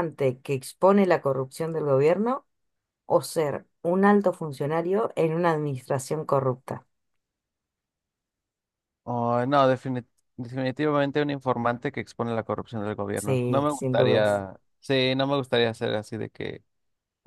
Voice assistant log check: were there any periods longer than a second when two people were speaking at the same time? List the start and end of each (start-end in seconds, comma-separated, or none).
13.1-14.4